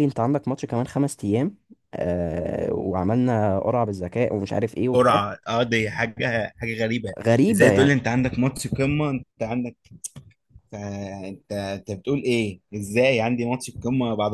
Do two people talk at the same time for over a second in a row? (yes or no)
no